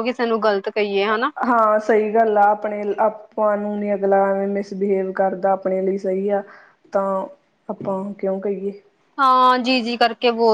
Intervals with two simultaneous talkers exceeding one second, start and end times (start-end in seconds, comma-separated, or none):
none